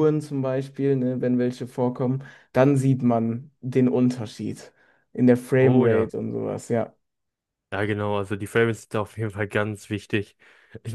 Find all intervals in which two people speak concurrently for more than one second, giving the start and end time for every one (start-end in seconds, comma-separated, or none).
none